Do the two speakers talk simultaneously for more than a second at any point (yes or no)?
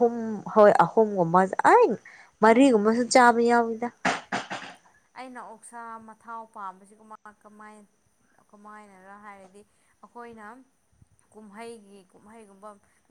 no